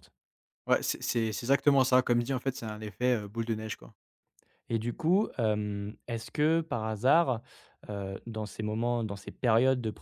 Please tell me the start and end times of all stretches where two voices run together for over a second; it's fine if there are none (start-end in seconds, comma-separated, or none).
none